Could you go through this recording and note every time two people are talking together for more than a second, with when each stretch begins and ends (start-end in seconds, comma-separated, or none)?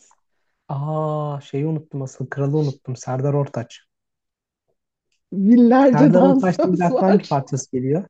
5.8-7.2